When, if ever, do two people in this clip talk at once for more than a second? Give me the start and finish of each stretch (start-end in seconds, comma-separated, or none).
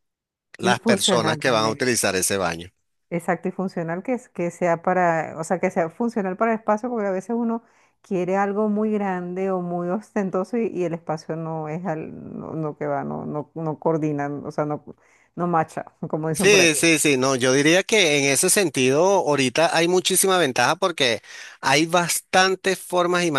0.6-1.9